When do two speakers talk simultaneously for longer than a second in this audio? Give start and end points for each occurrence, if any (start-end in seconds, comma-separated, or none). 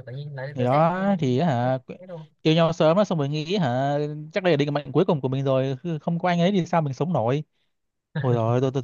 none